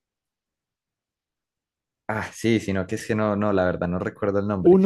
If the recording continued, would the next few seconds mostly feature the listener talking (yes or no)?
no